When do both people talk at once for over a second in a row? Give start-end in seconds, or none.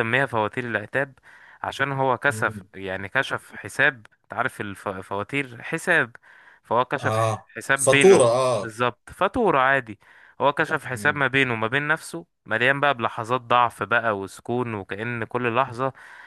7.0-8.8